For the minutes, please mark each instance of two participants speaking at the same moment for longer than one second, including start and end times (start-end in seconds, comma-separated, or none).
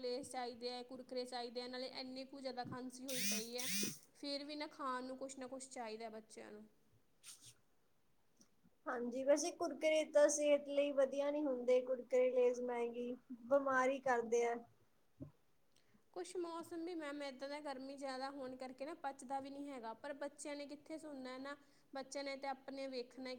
none